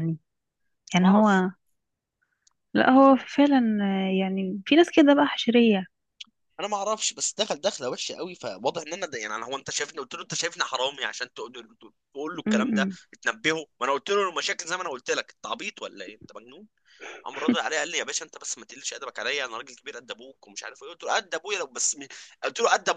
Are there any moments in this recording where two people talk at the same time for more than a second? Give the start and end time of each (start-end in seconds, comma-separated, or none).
none